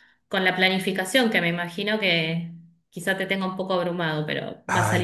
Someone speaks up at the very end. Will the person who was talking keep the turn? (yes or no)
no